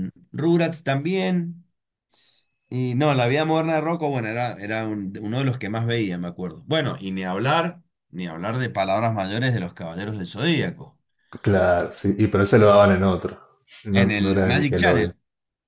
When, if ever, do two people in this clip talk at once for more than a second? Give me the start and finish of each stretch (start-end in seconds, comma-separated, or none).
13.9-15.1